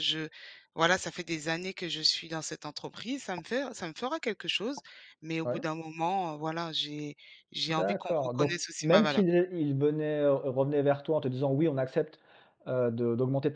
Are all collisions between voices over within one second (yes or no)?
no